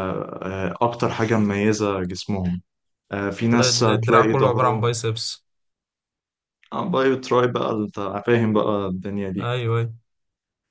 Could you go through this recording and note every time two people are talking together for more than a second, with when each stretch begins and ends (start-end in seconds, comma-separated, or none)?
3.5-4.9